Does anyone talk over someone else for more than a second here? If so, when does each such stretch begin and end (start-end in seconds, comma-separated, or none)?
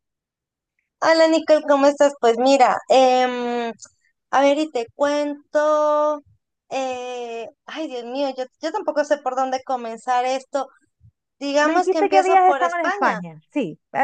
11.6-13.2